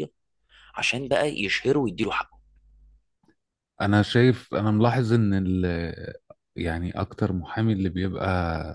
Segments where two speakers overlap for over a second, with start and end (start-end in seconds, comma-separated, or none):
none